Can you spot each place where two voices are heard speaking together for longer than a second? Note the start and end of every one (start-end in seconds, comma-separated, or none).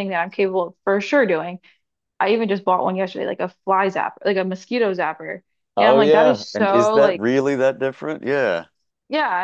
5.8-7.3